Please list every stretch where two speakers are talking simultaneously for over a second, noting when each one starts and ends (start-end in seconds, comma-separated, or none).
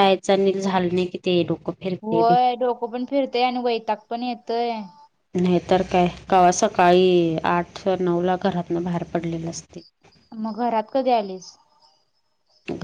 none